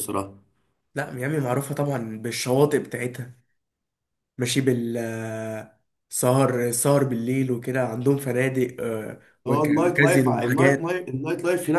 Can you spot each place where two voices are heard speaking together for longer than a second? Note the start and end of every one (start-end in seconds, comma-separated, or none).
9.5-10.9